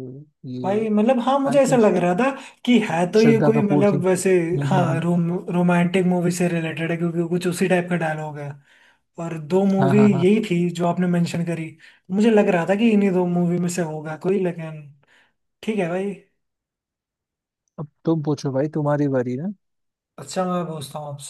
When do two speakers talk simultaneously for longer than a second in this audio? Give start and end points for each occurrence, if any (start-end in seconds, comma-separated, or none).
3.2-5.0